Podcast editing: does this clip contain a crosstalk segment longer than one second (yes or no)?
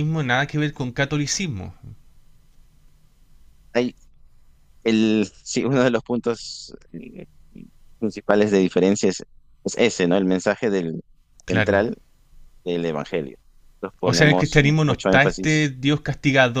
yes